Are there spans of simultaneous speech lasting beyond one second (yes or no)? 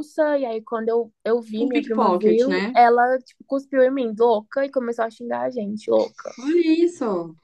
yes